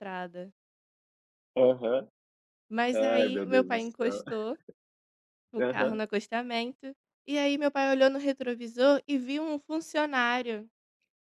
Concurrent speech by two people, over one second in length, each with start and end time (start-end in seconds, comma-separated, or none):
2.9-4.2